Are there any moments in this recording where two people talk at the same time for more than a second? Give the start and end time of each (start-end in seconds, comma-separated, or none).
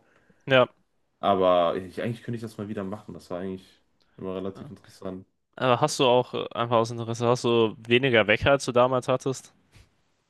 none